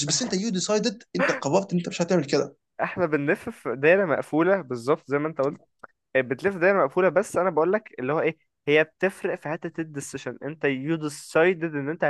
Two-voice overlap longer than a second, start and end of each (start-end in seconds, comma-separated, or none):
none